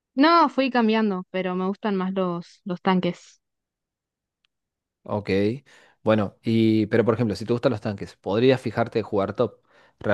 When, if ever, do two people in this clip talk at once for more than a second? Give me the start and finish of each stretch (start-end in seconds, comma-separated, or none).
none